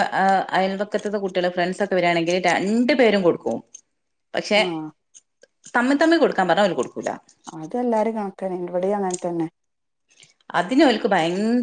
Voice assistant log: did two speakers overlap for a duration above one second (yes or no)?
no